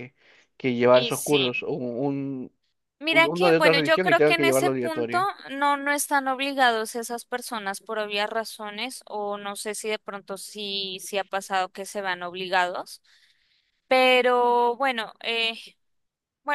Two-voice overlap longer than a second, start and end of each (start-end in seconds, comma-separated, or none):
3.1-5.3